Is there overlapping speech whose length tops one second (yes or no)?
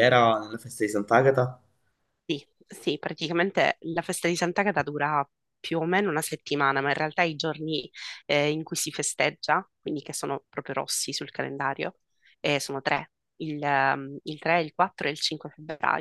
no